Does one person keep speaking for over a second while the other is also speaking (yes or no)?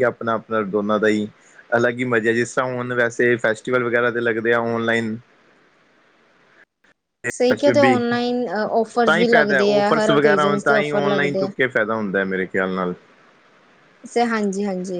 yes